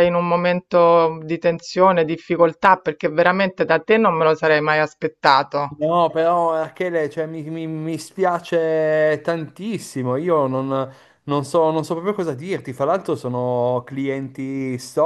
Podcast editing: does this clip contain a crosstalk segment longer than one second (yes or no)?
no